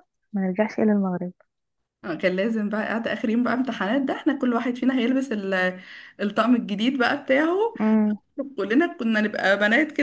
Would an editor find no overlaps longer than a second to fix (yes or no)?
yes